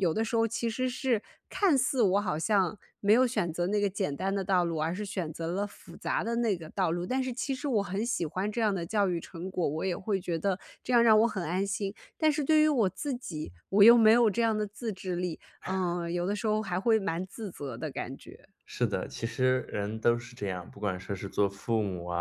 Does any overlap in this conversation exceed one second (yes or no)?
no